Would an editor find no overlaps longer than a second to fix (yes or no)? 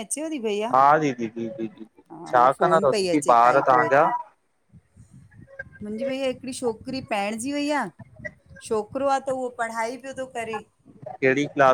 no